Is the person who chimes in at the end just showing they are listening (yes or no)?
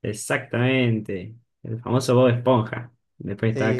no